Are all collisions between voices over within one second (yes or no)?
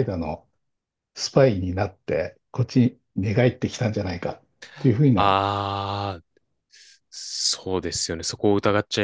yes